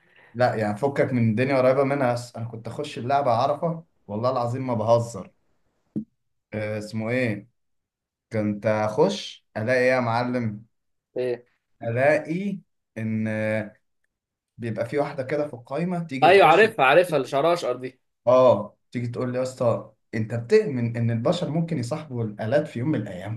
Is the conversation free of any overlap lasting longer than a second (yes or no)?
yes